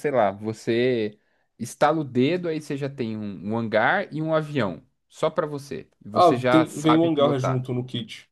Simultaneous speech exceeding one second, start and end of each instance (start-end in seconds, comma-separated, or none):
6.1-7.7